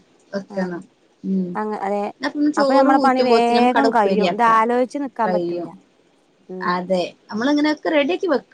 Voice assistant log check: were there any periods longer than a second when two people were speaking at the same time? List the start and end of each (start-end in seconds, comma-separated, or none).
2.6-4.5